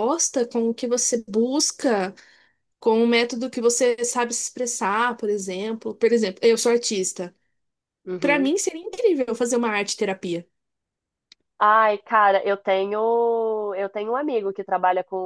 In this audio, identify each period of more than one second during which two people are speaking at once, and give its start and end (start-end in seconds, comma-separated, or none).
none